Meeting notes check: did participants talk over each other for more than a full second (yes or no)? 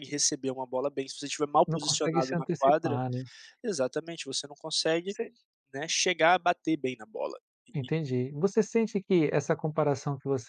yes